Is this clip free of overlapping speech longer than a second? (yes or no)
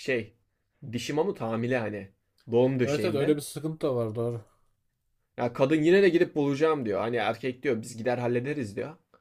yes